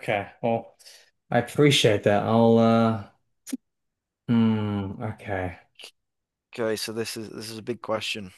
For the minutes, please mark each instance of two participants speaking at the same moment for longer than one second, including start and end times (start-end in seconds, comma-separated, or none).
none